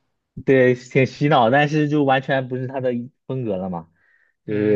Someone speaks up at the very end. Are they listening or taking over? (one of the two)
taking over